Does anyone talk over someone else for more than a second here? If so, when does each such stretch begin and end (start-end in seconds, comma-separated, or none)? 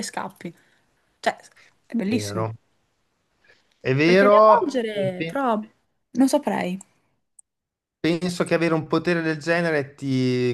4.0-5.4